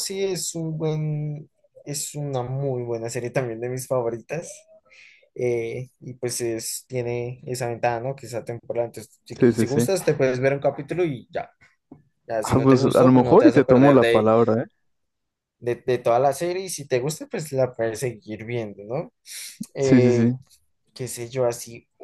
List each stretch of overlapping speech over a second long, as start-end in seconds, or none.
12.4-14.3